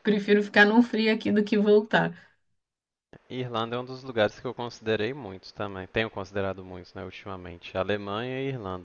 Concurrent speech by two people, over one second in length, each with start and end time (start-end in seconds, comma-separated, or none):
none